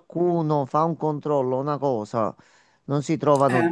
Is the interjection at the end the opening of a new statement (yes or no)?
no